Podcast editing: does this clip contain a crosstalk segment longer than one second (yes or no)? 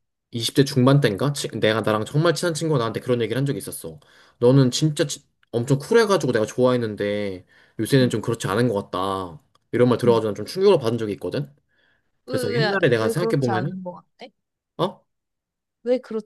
yes